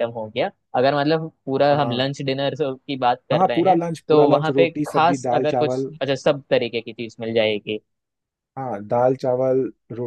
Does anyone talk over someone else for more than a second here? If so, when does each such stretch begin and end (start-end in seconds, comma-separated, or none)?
3.3-5.9